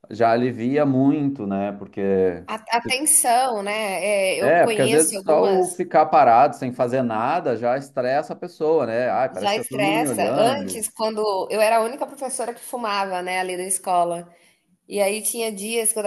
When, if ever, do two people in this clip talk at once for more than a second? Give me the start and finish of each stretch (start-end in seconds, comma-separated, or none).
4.4-5.7, 9.3-10.9